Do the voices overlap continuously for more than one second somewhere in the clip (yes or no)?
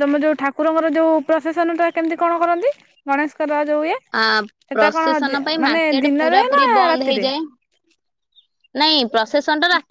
yes